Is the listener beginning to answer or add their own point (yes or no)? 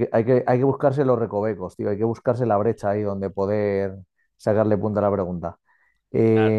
no